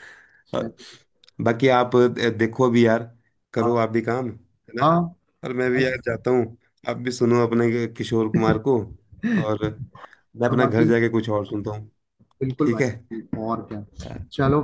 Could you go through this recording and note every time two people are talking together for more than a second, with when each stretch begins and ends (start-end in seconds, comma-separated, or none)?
none